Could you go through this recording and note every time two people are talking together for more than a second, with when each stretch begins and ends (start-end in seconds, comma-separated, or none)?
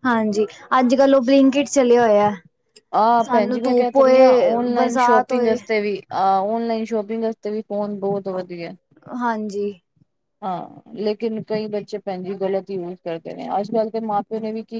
3.2-5.6